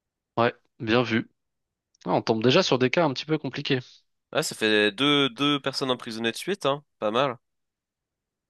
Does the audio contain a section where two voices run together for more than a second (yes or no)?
no